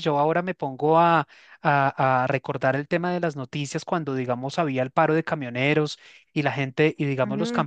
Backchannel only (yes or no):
yes